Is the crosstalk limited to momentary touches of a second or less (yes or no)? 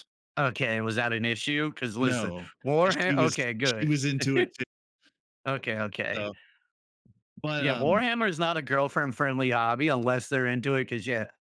no